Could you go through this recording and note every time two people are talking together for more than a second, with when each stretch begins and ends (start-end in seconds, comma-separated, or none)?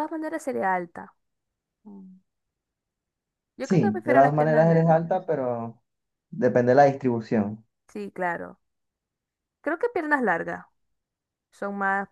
3.6-5.1